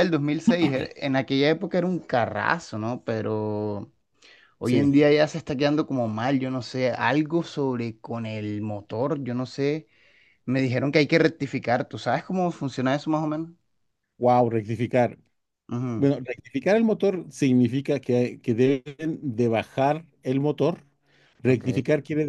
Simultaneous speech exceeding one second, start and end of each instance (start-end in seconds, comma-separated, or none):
none